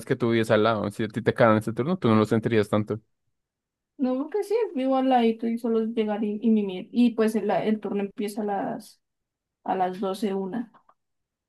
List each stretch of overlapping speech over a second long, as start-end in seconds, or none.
none